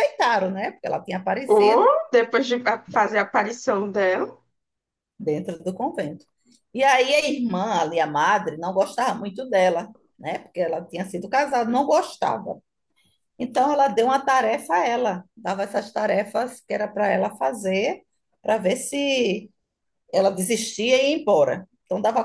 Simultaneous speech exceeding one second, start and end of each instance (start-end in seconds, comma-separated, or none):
none